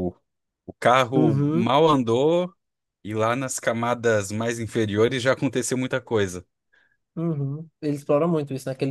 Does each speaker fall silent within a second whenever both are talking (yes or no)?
yes